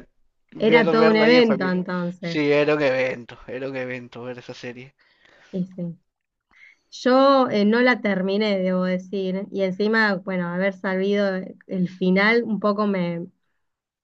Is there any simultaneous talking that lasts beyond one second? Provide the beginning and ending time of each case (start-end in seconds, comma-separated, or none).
0.6-2.5